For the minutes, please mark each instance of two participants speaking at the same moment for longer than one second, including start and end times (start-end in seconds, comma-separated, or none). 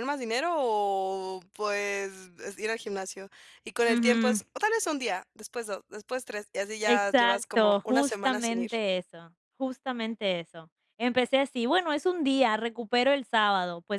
6.8-8.7